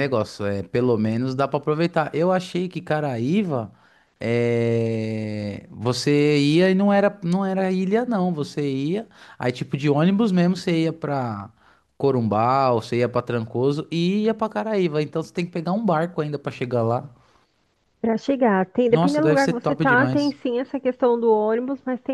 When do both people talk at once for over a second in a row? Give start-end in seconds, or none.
18.9-20.4